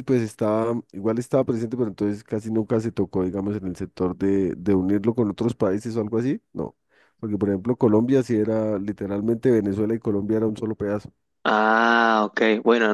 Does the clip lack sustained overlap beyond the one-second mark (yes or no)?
yes